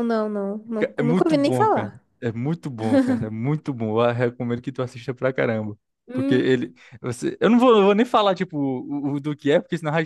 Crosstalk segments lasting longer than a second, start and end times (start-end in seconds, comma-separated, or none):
0.8-2.0